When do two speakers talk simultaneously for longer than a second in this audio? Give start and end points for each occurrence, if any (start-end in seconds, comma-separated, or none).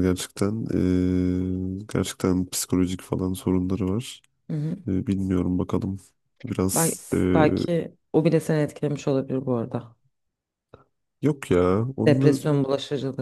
none